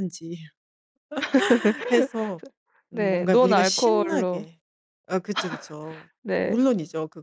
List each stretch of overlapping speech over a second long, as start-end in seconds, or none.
2.9-4.4